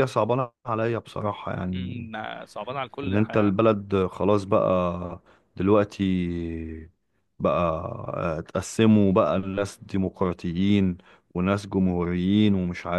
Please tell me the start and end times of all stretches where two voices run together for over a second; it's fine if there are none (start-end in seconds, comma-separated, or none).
none